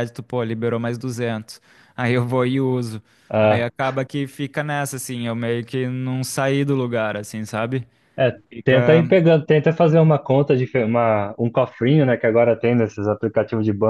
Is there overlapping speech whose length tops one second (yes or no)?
no